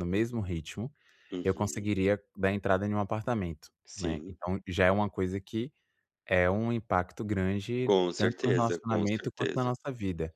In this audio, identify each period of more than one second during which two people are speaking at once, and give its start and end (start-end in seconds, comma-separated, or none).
7.8-9.7